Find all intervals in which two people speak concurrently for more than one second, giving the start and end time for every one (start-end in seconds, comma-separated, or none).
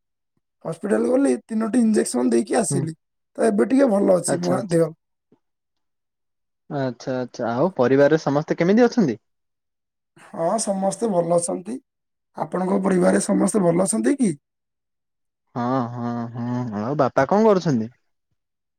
none